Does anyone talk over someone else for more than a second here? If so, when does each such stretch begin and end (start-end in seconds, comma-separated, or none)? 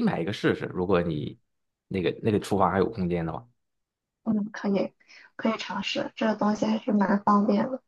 none